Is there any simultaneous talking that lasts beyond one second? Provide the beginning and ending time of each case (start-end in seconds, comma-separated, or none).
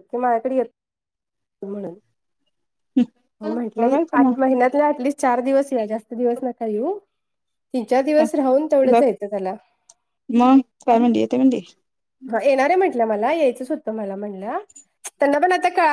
none